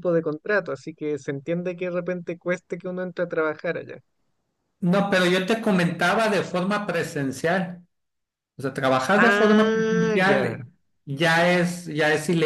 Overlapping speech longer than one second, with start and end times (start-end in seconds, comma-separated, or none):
9.1-10.6